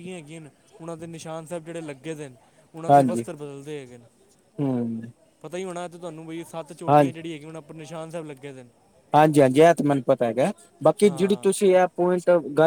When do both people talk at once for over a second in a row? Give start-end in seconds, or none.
none